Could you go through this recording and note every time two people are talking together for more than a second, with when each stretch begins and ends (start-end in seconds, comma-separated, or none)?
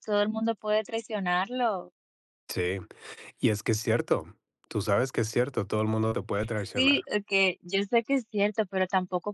none